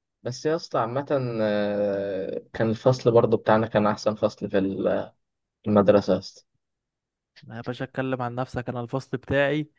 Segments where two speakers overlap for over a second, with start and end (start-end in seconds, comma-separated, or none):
none